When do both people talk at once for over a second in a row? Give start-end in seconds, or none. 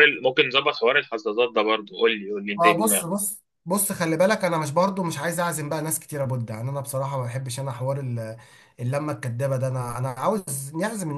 none